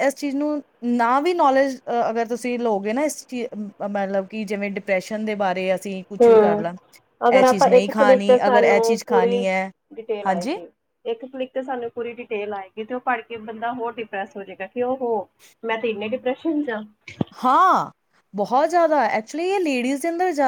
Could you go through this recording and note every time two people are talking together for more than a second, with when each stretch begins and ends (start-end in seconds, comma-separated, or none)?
7.4-9.4